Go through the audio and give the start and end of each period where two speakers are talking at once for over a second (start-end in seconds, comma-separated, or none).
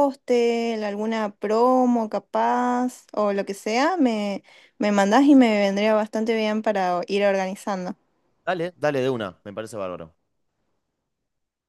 none